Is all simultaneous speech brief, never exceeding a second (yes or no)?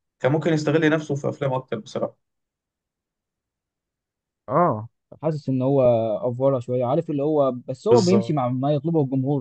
yes